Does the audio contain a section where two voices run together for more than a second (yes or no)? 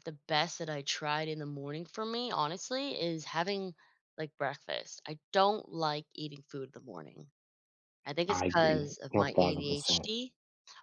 yes